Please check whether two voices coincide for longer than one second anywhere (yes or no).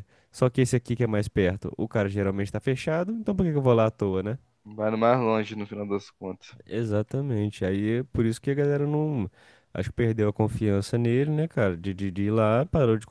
no